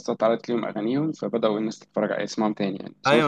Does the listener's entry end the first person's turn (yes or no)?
yes